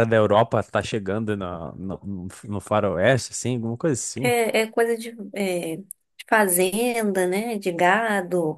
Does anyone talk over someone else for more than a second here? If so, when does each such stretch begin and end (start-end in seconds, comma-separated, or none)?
none